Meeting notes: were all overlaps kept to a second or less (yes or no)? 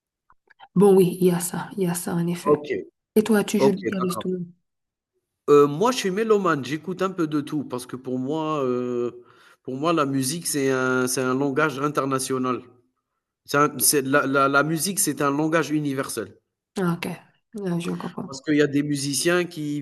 yes